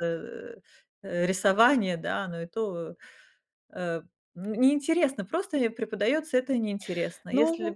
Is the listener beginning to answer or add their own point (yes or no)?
no